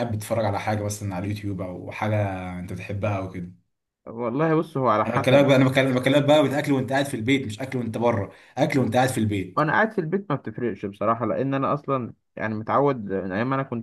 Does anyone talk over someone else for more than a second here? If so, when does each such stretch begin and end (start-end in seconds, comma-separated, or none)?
none